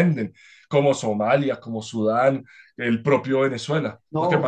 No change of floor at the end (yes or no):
no